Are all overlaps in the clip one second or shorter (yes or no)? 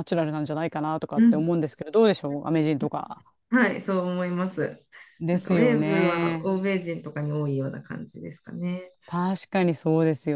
no